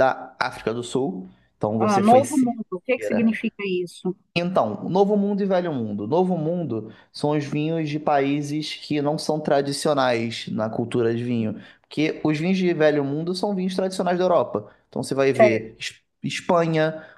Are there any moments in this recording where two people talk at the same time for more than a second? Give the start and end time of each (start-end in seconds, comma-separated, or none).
1.8-3.4